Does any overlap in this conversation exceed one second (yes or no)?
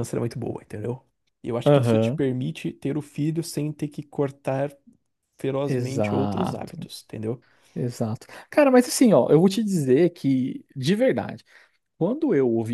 yes